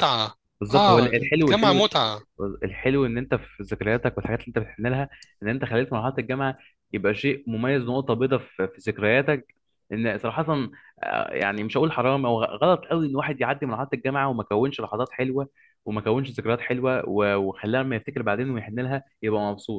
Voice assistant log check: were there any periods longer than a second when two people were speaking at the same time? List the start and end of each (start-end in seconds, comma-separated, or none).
0.6-1.9